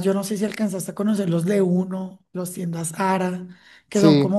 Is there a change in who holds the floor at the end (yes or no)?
no